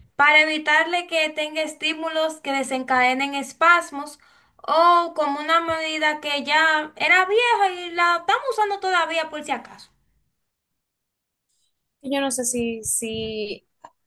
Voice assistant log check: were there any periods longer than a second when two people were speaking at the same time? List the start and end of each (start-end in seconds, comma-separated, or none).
none